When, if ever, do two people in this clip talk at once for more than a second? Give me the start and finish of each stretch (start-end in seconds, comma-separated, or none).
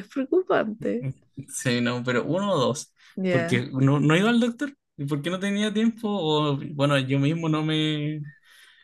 none